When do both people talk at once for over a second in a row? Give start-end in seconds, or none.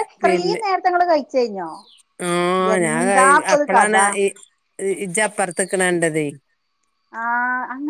none